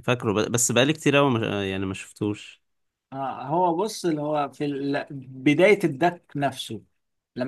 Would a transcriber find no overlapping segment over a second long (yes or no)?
yes